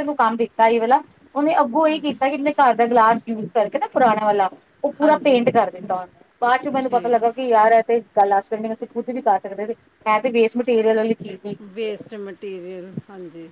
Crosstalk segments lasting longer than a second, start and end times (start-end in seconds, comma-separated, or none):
none